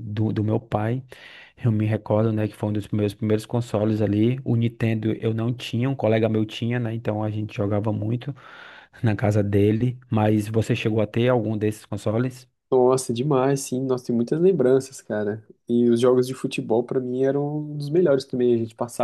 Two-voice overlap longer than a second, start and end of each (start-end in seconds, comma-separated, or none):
none